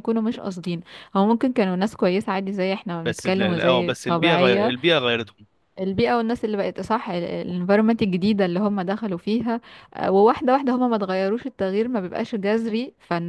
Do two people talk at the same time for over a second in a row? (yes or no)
yes